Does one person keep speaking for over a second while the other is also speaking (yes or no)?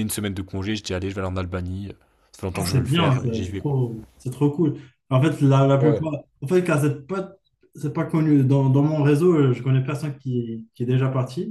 yes